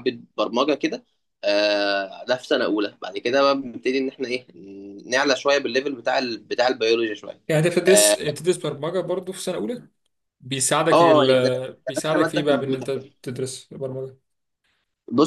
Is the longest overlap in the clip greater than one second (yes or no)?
yes